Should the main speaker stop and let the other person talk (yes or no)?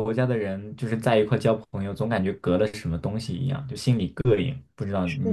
yes